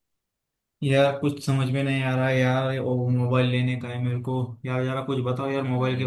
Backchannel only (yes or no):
yes